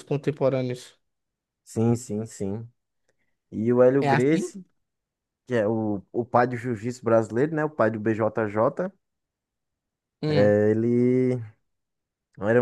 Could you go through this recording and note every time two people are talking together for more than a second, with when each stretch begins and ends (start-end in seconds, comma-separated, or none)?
none